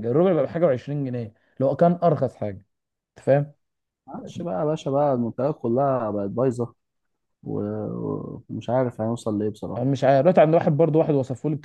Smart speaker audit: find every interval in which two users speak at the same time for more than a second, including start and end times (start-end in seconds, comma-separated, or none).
none